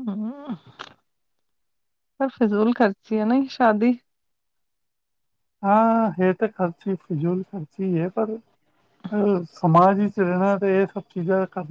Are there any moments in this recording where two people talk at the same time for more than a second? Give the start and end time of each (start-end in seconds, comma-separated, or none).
none